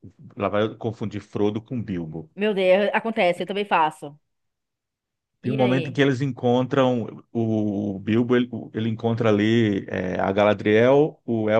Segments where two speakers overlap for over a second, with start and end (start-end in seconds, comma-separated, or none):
none